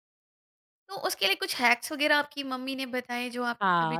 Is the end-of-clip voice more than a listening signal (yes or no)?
yes